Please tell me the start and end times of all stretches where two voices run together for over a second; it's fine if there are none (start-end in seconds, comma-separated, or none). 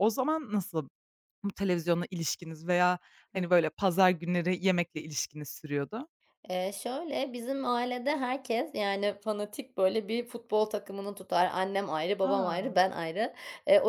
none